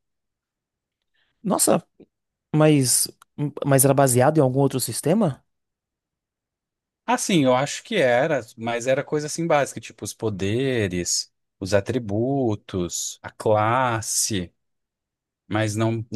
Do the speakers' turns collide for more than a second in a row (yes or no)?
no